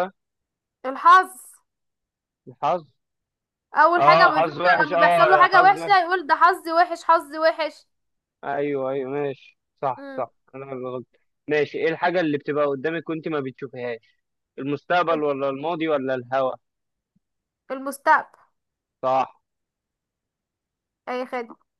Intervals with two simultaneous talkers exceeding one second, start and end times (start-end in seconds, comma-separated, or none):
4.0-6.0